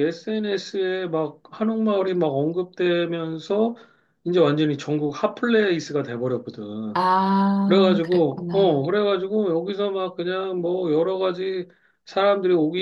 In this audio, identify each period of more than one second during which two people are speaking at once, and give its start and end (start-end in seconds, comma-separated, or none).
7.7-8.9